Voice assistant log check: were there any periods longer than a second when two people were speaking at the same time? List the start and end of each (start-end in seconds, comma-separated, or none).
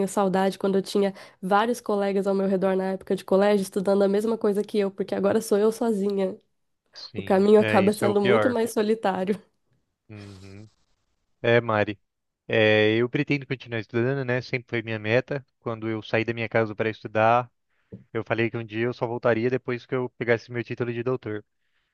7.2-8.6